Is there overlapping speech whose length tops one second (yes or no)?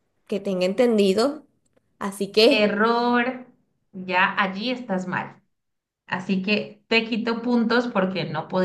no